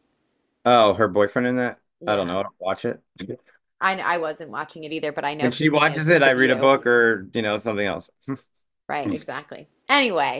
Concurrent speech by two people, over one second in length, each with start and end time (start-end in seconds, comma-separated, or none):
5.4-6.7